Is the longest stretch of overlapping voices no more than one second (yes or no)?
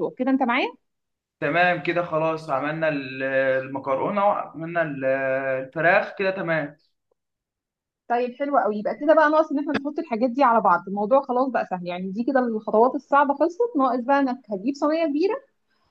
yes